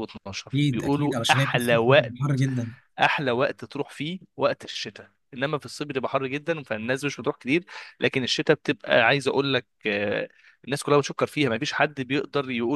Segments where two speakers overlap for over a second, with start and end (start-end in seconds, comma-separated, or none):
0.5-2.1